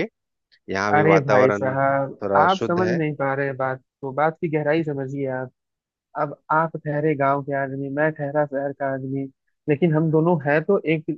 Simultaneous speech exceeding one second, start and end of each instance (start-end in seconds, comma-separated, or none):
0.9-3.0